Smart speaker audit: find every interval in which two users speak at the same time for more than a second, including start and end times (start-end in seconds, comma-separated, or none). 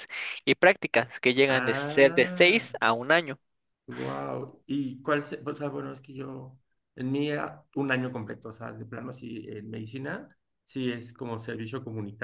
1.5-2.7